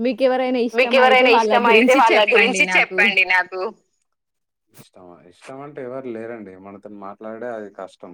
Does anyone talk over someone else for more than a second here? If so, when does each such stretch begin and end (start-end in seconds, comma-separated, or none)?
0.8-3.0